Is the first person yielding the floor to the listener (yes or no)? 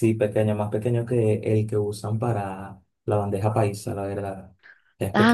yes